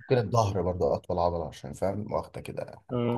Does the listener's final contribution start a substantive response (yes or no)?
yes